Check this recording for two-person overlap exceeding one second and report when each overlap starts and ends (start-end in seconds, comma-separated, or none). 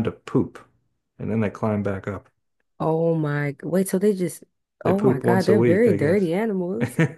4.8-6.3